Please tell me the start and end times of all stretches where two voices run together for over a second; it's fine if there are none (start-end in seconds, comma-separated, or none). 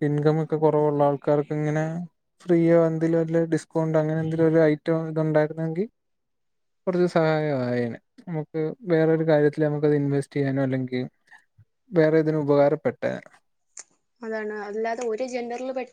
none